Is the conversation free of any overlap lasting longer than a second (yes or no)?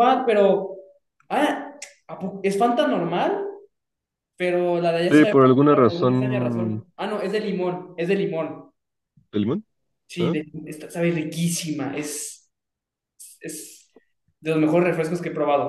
no